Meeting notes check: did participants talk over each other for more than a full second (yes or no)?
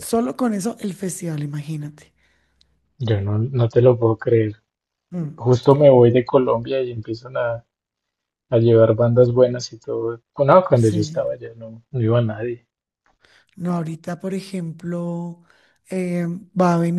no